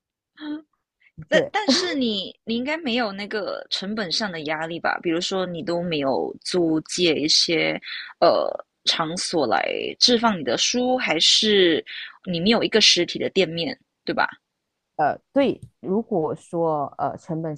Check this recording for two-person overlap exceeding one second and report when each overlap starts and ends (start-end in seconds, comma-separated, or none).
none